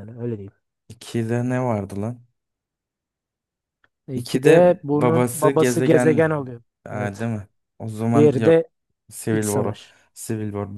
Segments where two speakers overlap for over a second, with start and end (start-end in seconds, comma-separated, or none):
4.1-6.2